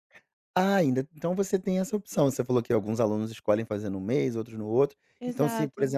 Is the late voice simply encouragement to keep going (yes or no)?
yes